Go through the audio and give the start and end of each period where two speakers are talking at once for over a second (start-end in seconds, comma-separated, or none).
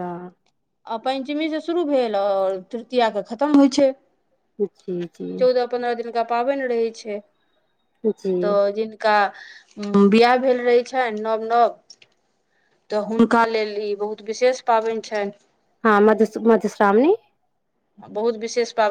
none